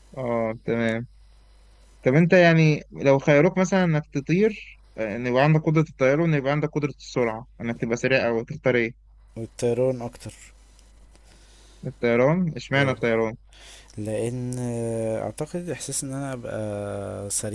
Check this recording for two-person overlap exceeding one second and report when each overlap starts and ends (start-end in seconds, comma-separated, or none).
none